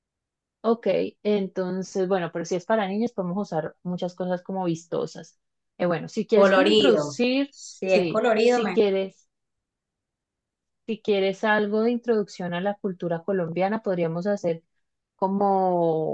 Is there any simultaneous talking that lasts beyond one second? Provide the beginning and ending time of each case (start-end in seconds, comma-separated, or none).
6.3-8.8